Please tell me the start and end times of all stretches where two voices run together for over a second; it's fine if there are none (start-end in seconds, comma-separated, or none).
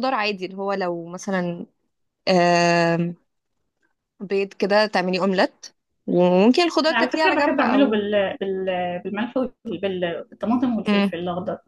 6.9-8.1